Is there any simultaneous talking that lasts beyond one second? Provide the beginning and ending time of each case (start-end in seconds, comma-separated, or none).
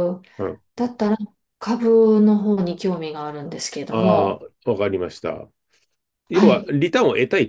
none